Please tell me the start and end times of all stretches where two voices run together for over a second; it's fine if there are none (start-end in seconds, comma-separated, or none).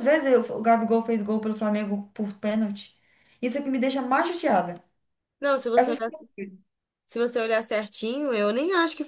none